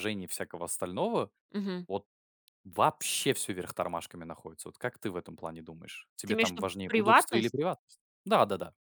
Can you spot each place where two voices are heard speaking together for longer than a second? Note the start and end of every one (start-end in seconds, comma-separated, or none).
6.2-7.5